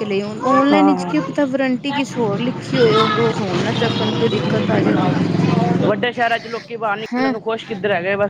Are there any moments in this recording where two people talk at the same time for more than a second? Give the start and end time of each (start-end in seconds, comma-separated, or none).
none